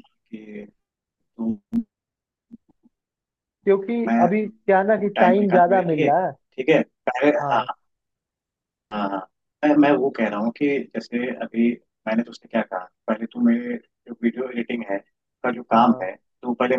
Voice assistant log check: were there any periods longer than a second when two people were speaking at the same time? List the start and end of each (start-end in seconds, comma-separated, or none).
4.1-6.3